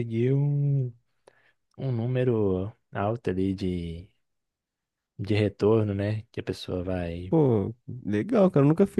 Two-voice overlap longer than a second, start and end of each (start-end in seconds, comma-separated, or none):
none